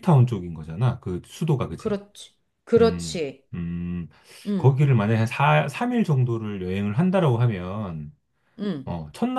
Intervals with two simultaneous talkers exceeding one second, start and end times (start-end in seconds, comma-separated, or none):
none